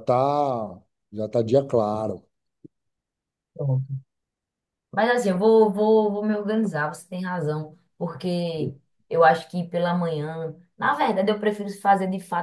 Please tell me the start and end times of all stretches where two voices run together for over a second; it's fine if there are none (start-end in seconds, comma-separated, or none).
none